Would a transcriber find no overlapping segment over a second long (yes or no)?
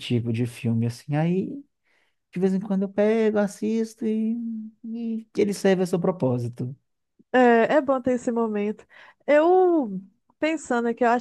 yes